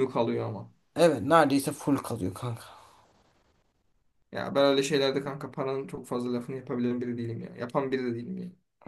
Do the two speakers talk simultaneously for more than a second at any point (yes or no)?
no